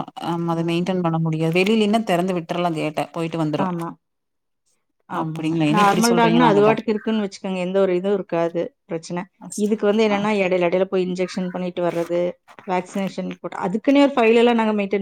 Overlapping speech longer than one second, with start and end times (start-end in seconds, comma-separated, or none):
5.2-6.7